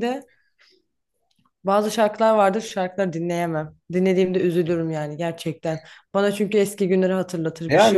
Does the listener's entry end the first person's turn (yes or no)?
yes